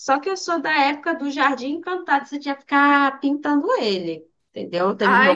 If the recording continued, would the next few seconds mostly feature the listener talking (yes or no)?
yes